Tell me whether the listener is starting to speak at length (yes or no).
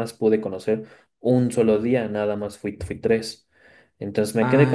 no